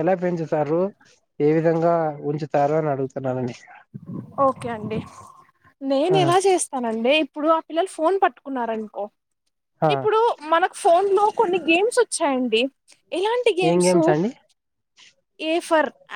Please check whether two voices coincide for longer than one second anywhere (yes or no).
no